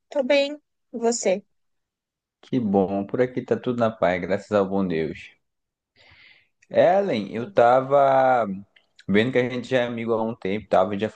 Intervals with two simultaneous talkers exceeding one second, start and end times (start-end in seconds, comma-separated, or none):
none